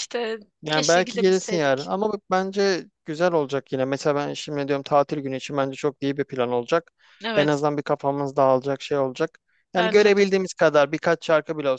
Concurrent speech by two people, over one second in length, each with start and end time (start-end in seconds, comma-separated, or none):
0.6-1.9